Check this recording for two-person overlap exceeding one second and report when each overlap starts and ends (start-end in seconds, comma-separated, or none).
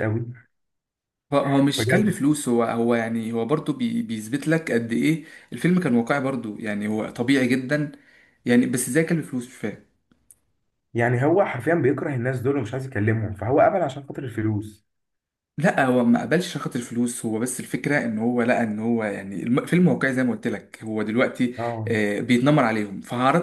none